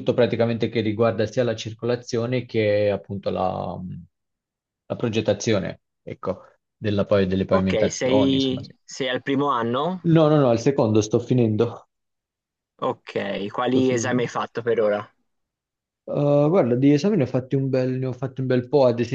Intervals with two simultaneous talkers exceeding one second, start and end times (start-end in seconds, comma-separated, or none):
7.5-8.7